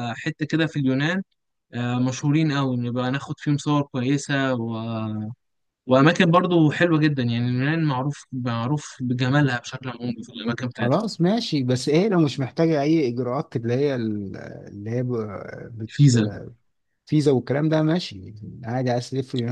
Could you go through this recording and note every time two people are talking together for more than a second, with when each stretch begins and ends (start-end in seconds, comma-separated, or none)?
none